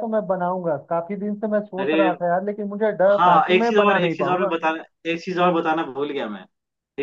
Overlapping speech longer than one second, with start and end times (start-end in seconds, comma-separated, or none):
3.2-4.5